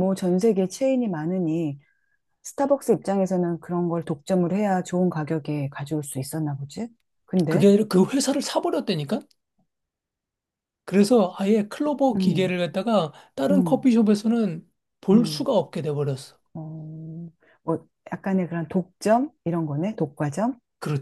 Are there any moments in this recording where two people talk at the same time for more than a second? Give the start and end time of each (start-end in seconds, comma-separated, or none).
none